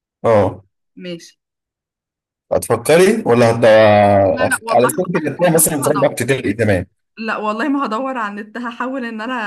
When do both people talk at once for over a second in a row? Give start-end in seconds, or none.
4.5-6.2